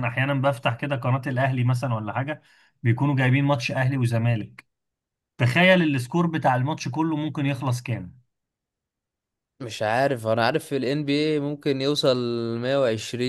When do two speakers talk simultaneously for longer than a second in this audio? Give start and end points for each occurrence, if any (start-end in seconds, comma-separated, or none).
none